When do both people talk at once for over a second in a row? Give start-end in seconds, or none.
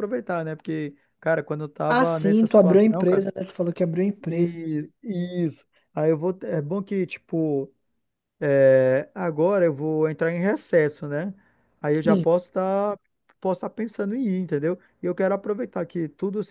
1.9-3.2